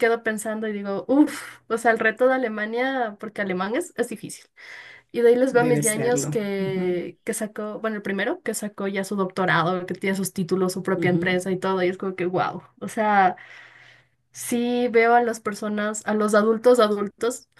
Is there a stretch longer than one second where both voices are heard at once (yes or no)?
yes